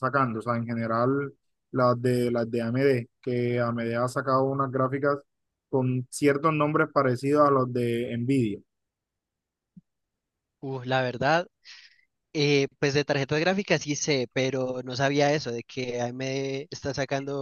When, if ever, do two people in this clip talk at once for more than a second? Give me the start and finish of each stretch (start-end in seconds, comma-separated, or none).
none